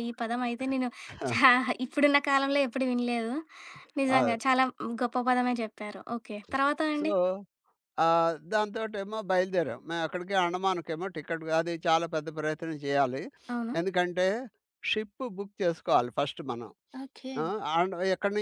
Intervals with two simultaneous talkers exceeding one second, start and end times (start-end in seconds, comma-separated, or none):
none